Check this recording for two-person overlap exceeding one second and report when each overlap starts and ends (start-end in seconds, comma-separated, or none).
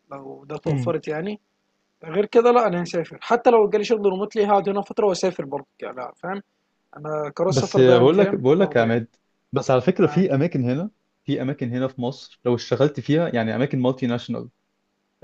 7.5-9.0